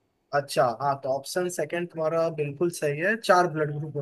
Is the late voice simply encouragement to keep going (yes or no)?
no